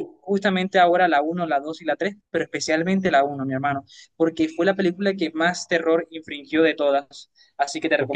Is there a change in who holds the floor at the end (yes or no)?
no